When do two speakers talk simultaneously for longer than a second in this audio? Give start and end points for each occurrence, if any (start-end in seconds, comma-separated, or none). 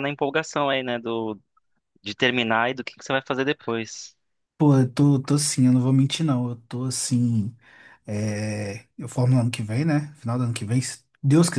none